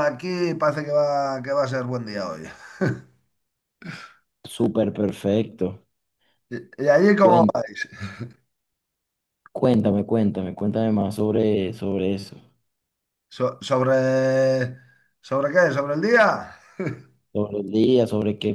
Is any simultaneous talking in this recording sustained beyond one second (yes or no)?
no